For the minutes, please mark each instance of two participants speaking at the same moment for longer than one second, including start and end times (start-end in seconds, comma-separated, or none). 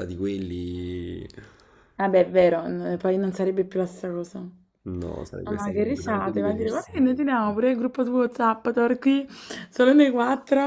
5.5-6.9